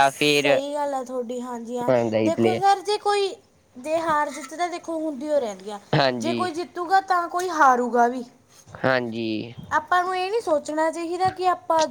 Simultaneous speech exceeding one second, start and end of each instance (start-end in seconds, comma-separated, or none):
none